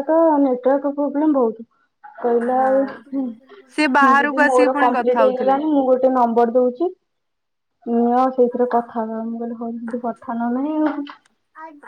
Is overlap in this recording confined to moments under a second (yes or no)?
no